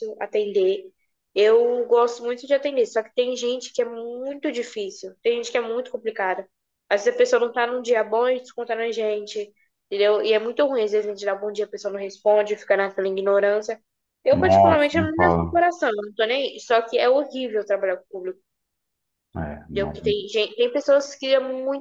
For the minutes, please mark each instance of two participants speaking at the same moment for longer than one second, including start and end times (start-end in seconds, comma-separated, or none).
14.3-15.6